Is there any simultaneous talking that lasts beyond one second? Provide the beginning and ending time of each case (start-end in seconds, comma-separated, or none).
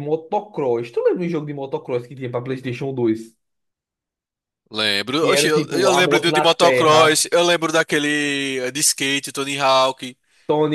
5.2-7.2